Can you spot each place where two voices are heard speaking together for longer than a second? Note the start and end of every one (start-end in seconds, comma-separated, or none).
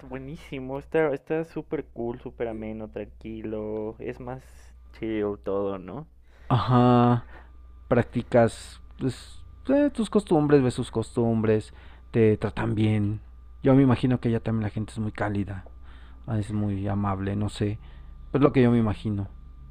none